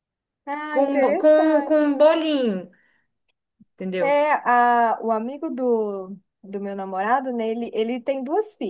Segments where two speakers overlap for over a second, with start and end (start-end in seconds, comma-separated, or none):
0.7-2.0